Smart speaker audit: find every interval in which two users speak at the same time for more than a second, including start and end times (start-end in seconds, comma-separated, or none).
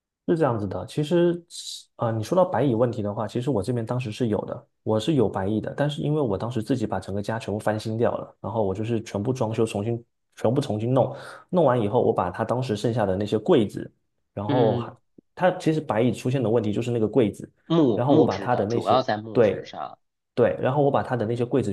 17.9-19.7